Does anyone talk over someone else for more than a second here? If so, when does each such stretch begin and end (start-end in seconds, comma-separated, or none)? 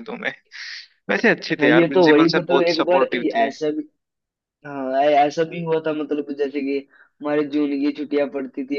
1.6-3.5